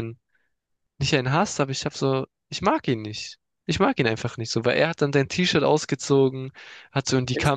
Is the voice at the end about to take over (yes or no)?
no